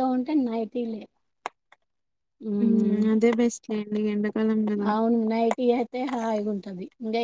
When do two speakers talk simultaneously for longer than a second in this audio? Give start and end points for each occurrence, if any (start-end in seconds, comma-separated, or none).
none